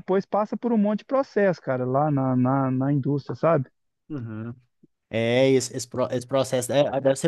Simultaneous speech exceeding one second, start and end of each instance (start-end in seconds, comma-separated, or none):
none